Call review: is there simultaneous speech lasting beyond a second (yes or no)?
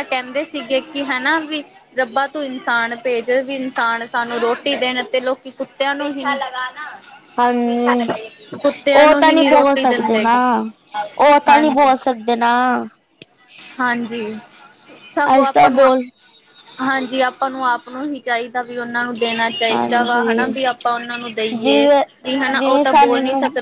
yes